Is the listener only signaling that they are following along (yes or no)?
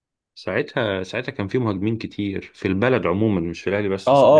no